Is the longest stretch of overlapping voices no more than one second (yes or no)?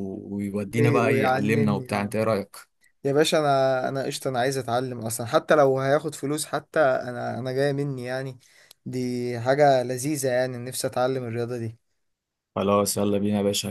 no